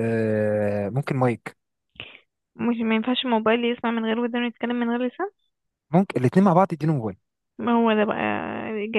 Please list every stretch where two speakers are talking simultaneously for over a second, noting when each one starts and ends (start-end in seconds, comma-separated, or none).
none